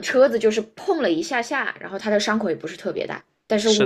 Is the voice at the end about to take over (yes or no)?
yes